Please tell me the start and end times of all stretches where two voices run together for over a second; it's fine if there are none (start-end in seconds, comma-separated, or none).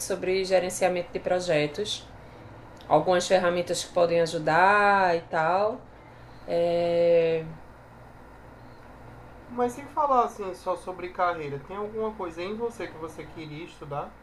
none